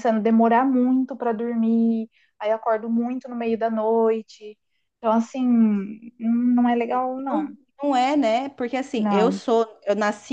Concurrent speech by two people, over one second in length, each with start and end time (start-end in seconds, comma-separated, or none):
none